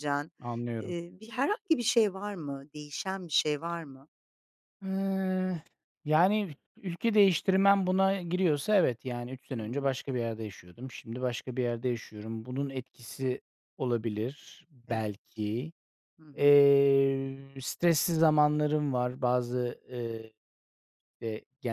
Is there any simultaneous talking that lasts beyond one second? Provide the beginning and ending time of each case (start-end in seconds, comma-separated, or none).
none